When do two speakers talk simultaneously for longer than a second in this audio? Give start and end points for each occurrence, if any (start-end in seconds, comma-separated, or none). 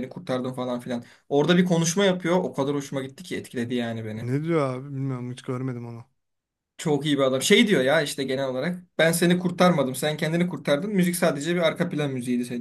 none